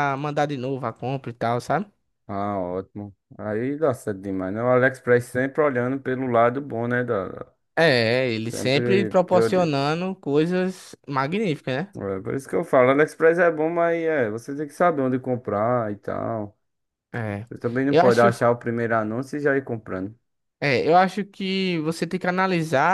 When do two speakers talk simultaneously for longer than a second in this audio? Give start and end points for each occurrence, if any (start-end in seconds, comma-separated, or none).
8.4-9.7